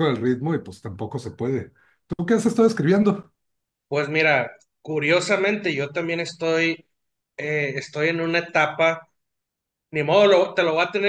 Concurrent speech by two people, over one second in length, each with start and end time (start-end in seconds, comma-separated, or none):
none